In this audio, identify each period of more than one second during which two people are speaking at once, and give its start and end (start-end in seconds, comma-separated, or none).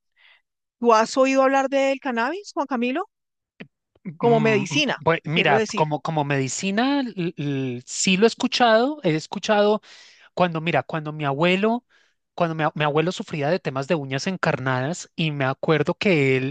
4.2-5.9